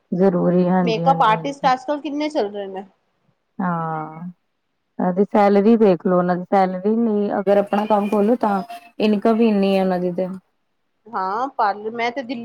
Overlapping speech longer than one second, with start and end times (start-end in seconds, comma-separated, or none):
none